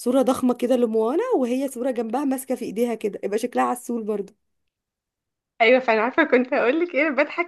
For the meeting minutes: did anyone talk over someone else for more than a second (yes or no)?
no